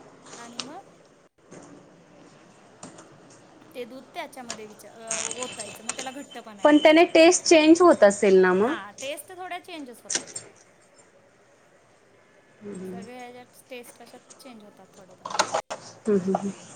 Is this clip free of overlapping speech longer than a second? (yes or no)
yes